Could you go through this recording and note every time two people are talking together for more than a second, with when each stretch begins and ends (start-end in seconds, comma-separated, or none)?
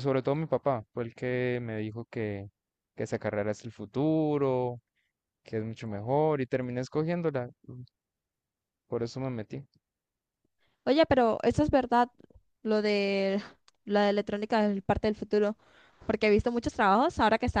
none